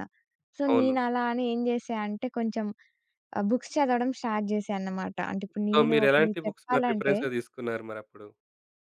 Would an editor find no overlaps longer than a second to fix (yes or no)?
no